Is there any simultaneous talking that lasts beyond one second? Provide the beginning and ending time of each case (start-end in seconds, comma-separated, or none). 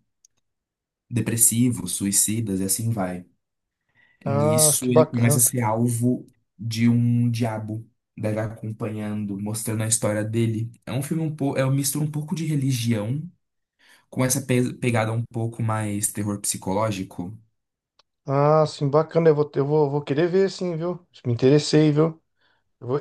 4.2-5.5